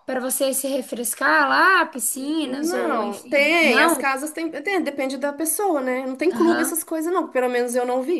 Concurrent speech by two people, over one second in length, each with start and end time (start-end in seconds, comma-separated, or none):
2.4-4.1